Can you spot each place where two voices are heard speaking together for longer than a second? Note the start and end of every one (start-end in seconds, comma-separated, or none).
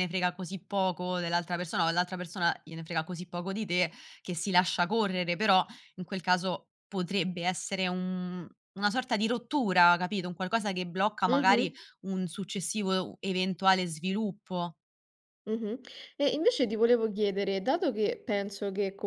none